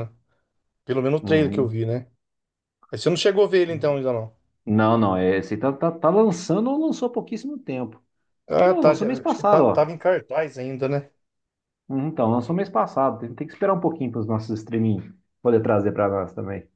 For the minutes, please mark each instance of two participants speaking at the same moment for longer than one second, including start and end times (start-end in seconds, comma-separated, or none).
8.6-9.9